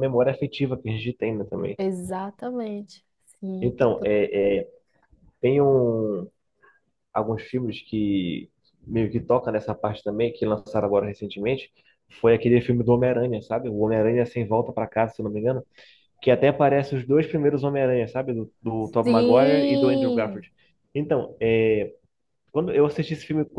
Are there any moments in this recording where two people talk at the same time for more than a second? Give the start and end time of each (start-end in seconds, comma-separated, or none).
19.0-20.4